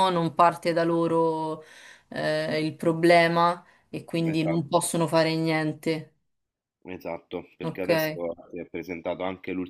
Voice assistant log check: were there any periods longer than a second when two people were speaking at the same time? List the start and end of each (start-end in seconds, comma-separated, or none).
none